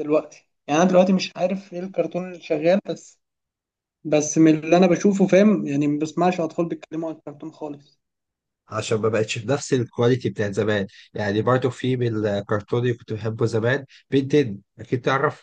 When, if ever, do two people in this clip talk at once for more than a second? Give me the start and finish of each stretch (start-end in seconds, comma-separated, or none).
none